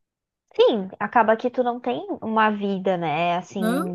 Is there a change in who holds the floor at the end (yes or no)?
no